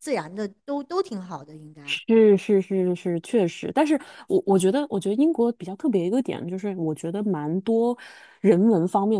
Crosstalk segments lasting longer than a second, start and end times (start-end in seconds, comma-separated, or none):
none